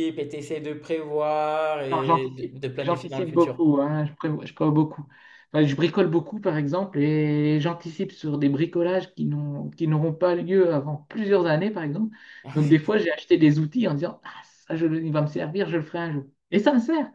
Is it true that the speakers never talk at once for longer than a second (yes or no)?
no